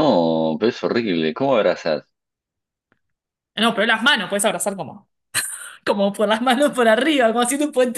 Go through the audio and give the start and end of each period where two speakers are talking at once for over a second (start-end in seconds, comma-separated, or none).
none